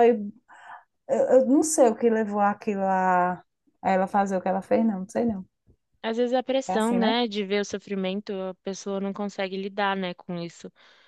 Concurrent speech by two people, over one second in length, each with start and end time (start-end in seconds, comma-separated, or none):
none